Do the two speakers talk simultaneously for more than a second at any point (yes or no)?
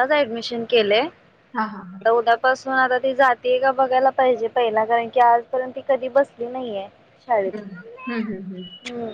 yes